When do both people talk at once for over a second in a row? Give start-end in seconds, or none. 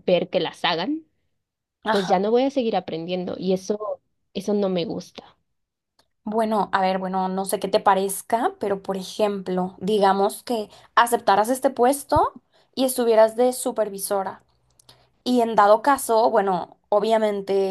none